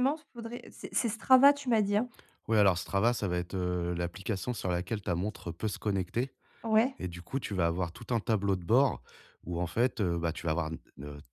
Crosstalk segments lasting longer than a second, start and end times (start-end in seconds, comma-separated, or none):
none